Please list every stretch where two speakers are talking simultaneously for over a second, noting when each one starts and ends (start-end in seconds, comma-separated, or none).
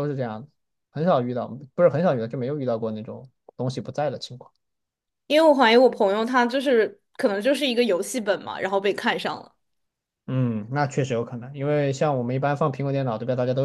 none